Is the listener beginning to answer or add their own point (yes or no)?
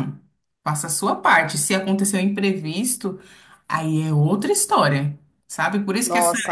no